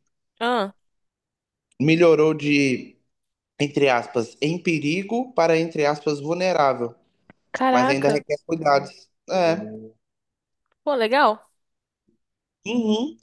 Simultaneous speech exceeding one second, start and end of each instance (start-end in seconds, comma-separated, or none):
none